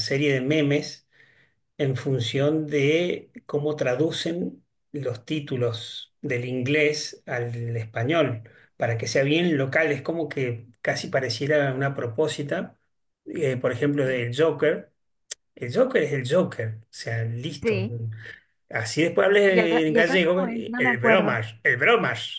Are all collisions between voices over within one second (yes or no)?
no